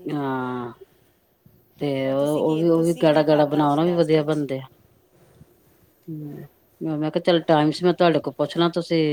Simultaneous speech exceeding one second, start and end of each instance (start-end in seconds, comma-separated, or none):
2.0-4.4